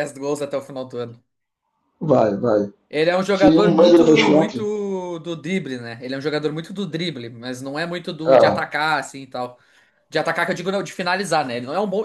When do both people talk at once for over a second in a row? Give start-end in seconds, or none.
3.3-4.7